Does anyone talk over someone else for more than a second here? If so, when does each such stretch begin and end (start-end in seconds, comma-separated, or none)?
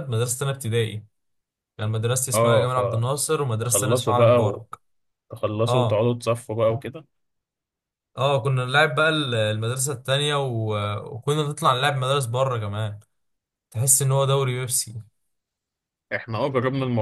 3.4-4.6